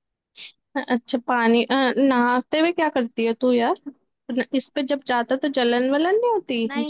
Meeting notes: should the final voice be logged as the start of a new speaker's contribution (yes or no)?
yes